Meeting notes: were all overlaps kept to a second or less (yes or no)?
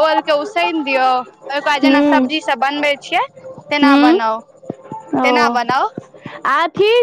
yes